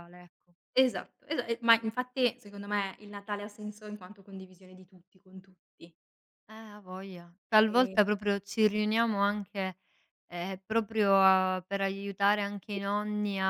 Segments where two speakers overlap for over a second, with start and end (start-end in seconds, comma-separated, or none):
none